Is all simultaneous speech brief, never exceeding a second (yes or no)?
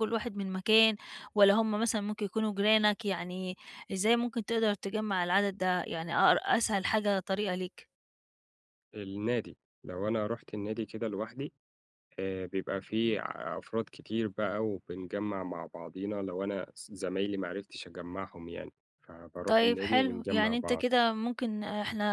no